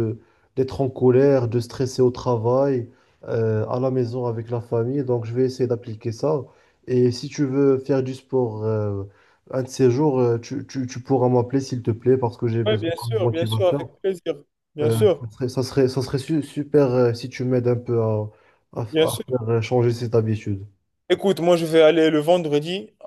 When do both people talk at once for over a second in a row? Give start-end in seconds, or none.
12.7-13.9